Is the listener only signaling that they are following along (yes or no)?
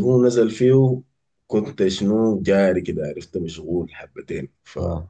yes